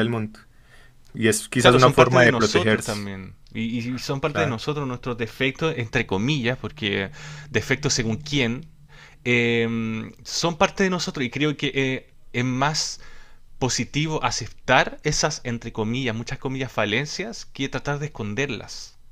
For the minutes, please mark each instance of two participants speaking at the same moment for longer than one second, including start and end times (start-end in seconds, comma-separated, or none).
1.6-3.1